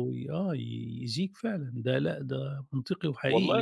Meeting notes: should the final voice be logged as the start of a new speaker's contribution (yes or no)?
yes